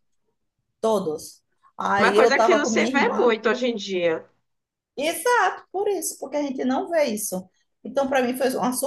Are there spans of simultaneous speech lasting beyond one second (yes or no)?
yes